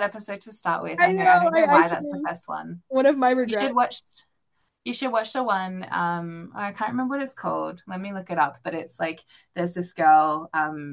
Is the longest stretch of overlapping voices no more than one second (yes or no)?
no